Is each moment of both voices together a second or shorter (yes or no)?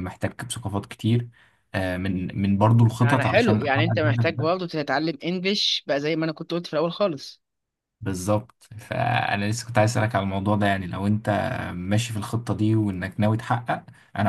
no